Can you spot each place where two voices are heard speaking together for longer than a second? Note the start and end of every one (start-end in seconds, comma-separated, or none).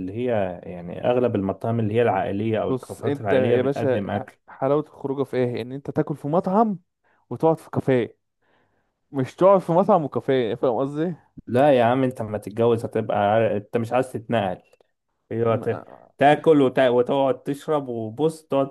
2.7-4.0